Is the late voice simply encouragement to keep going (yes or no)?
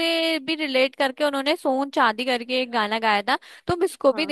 yes